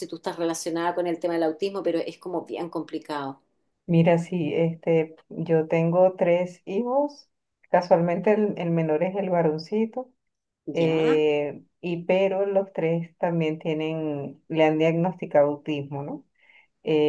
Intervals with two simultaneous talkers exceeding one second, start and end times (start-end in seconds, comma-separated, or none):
none